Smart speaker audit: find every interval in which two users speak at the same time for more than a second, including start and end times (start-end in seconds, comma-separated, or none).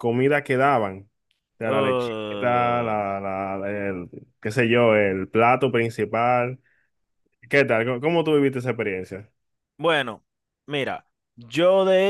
1.6-3.0